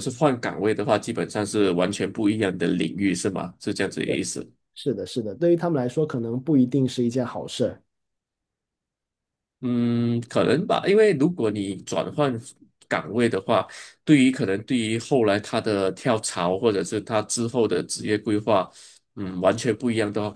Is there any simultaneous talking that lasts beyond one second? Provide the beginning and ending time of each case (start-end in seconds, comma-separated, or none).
none